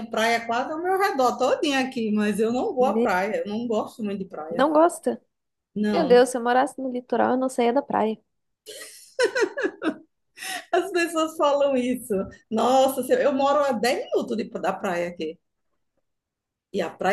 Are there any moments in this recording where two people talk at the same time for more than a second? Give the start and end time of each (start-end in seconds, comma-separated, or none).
none